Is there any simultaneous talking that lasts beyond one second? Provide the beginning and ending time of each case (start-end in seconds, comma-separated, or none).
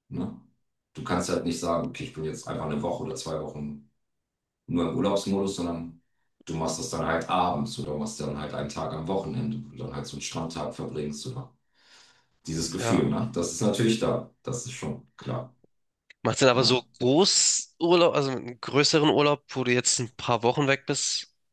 none